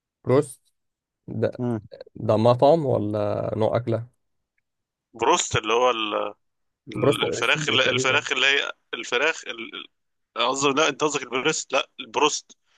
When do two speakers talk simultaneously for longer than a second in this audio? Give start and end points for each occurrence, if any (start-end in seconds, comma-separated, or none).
6.9-8.2